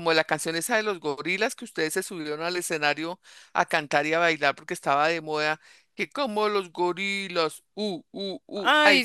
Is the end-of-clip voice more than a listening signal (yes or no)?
no